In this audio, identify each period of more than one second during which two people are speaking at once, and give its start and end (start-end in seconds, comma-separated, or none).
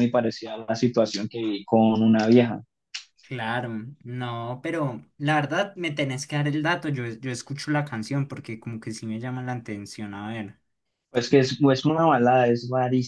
none